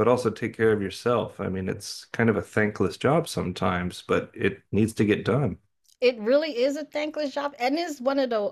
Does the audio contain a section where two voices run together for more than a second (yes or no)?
no